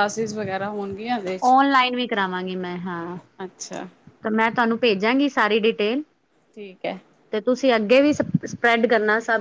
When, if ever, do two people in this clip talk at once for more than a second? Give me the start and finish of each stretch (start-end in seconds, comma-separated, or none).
none